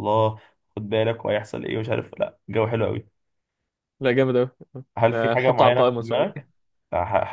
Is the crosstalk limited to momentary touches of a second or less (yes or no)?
no